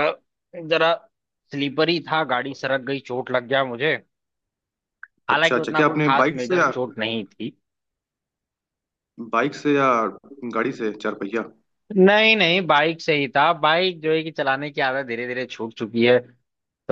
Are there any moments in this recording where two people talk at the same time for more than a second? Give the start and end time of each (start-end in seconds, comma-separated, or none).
5.3-6.7